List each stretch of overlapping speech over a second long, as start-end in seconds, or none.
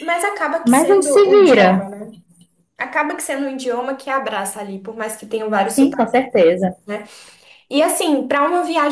0.6-1.9